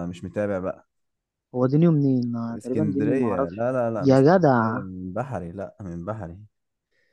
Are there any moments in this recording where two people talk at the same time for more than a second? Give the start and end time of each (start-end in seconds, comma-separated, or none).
2.5-4.8